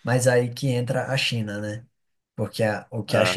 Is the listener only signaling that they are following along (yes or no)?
yes